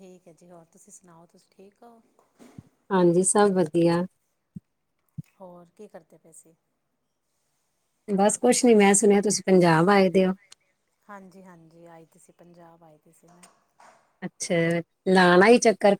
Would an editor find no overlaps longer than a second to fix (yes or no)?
yes